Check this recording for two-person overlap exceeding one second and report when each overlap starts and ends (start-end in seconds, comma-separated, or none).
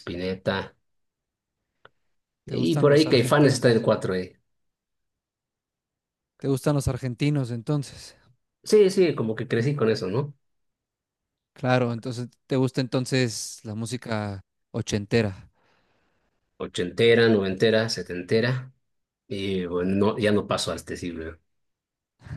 2.5-3.9